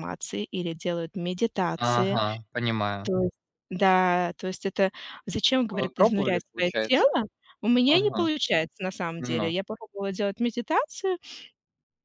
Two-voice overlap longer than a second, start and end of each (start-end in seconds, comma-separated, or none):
5.7-7.1